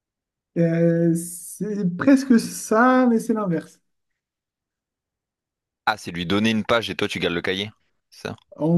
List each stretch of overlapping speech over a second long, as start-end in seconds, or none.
none